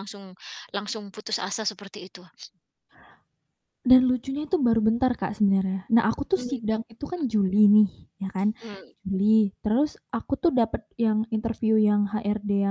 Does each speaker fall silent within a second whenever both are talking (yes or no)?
yes